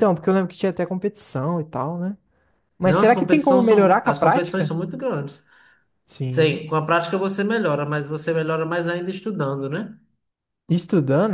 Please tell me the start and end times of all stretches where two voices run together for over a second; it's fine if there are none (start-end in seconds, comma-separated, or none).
2.8-4.8